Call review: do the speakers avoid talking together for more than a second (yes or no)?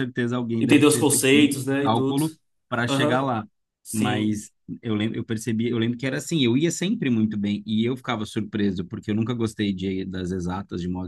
no